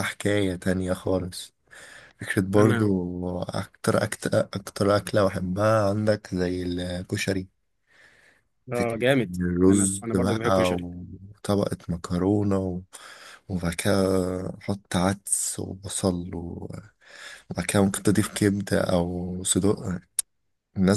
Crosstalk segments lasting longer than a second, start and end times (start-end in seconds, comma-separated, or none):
8.7-10.9